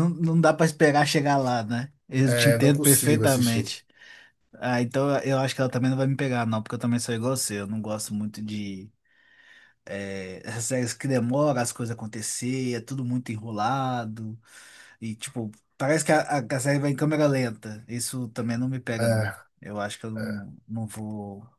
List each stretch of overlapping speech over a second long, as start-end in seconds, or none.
2.3-3.7